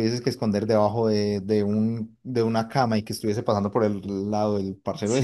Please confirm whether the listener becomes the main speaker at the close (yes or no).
yes